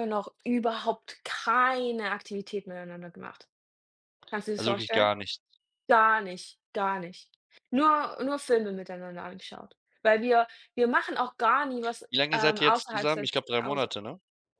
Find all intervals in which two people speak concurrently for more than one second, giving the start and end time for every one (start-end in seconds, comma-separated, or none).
12.1-13.9